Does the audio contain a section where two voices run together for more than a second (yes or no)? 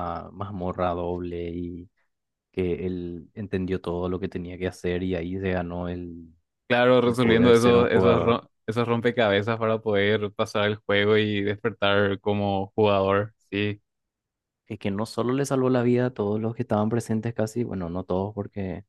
yes